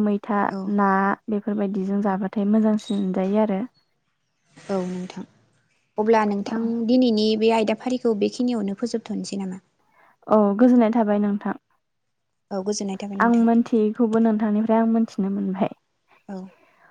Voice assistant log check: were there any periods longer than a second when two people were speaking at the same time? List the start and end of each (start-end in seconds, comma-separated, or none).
none